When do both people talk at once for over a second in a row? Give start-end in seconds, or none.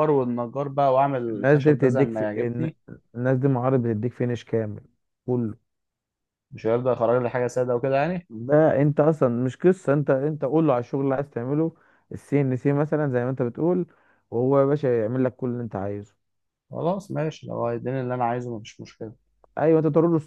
1.3-2.7